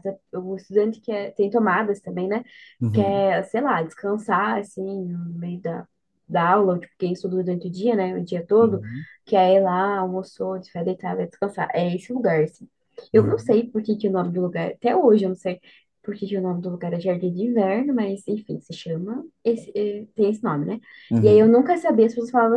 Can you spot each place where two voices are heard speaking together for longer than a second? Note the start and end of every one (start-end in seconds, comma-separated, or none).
none